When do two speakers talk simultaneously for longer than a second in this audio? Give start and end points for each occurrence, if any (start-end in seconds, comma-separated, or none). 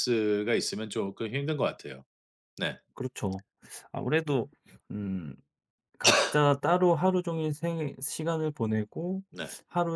none